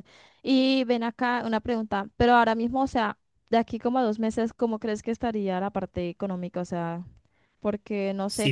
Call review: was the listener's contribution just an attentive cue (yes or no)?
no